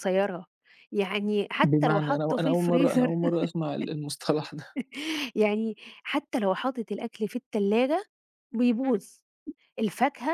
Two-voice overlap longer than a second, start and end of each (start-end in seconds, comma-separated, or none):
1.6-3.2